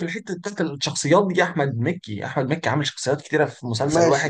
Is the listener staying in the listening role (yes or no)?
no